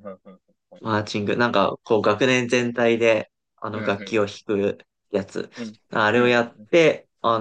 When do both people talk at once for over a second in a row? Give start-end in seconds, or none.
none